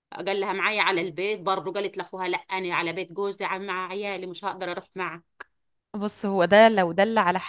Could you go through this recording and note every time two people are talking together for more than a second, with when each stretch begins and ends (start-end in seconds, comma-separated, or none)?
none